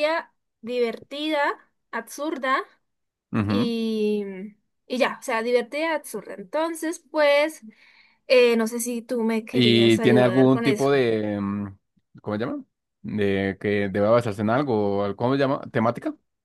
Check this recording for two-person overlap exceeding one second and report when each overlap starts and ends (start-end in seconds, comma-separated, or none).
9.5-10.9